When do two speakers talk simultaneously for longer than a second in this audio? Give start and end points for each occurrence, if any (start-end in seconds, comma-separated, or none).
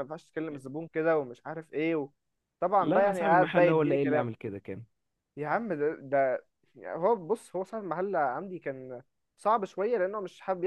2.8-4.3